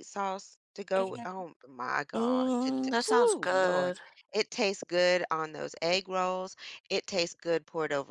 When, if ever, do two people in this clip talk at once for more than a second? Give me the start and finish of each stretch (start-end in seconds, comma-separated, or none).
2.2-3.9